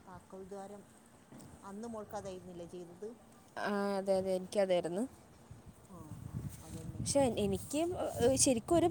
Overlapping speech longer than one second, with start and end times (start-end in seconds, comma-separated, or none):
none